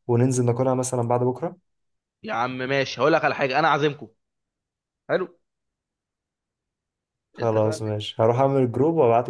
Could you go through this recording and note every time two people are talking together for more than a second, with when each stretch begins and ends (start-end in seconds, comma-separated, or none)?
none